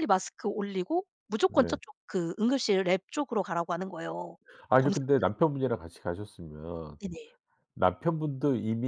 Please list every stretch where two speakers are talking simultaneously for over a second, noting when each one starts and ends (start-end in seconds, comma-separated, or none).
none